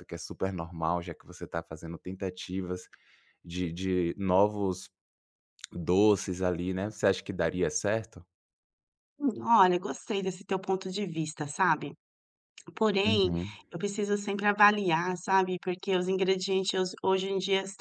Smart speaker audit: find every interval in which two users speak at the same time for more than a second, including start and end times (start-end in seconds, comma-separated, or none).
none